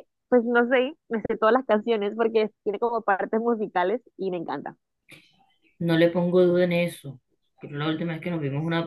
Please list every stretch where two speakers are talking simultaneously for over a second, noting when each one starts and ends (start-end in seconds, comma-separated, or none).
none